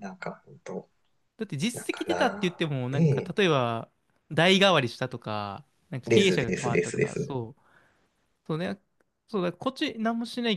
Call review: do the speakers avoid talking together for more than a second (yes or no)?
no